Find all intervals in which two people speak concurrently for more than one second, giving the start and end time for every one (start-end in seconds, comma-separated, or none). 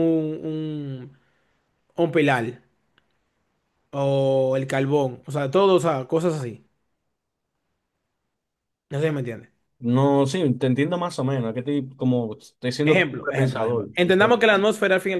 12.8-14.7